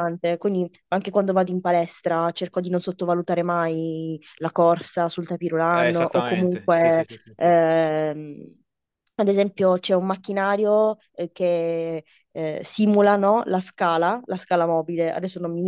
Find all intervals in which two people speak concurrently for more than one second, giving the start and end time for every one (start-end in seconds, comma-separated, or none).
5.7-7.5